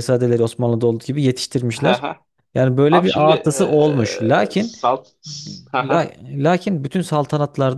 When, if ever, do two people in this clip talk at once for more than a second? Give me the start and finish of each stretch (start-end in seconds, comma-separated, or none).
2.9-4.8